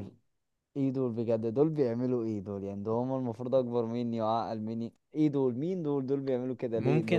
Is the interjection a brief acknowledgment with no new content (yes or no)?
no